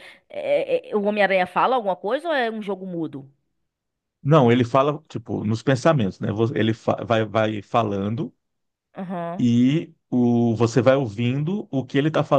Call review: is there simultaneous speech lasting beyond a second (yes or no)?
no